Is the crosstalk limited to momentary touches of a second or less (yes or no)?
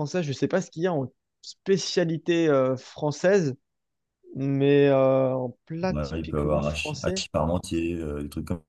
no